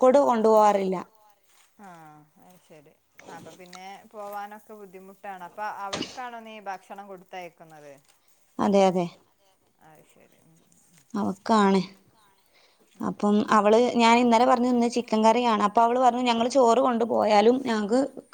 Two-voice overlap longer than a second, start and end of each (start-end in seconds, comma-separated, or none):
none